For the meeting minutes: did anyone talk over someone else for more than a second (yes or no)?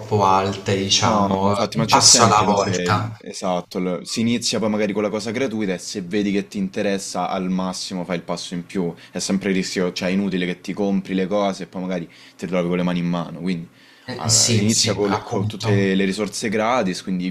yes